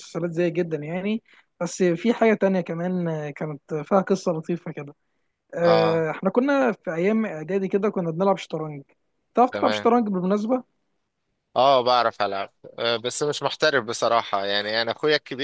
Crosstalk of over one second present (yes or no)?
no